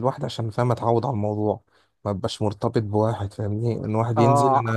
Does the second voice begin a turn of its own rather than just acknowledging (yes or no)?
yes